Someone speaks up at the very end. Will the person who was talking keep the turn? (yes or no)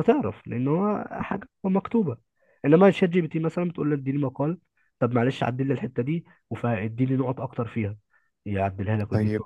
no